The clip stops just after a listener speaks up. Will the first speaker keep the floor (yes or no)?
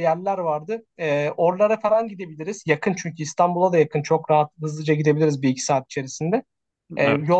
yes